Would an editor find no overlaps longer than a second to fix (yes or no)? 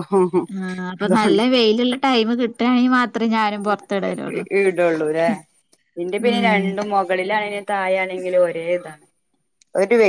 yes